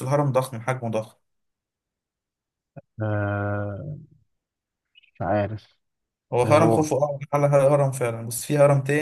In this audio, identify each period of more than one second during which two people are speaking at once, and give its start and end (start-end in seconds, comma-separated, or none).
none